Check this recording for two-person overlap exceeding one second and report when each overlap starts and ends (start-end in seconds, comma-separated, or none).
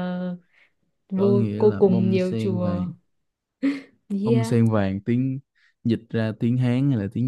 1.2-2.8